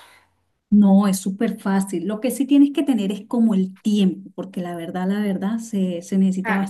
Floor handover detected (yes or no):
no